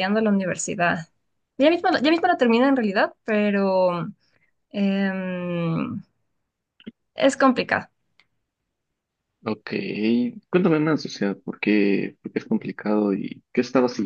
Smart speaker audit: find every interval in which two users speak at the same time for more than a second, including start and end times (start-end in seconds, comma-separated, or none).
none